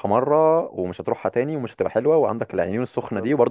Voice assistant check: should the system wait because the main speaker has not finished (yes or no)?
yes